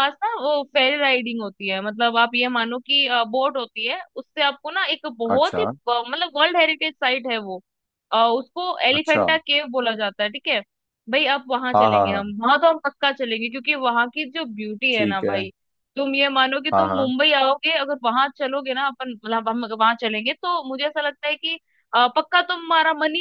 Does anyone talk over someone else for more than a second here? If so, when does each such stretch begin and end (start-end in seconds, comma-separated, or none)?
none